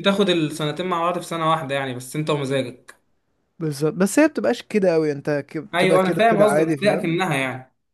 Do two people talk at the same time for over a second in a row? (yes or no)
yes